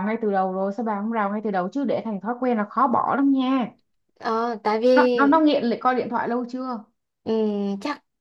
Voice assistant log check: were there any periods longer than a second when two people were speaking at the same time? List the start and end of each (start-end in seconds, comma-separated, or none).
none